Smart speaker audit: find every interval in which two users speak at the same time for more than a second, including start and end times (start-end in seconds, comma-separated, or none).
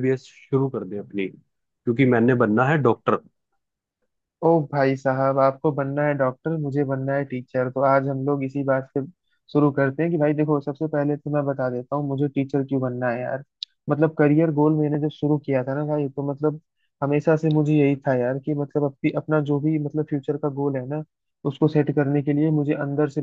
none